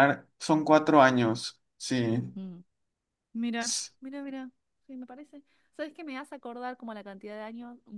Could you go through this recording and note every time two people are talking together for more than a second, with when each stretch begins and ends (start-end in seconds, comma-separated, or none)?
none